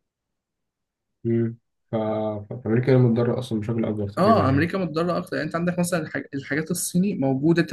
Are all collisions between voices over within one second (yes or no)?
yes